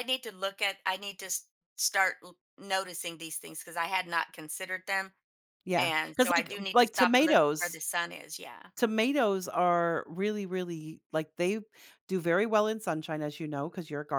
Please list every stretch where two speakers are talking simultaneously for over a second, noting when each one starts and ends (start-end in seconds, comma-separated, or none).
5.8-7.8